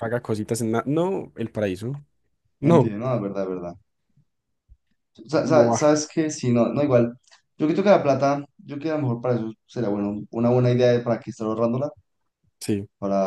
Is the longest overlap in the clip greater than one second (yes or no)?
no